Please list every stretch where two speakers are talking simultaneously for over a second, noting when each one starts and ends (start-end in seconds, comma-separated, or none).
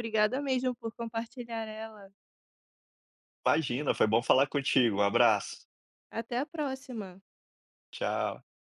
none